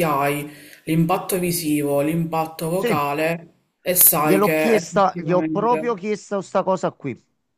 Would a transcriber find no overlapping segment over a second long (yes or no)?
no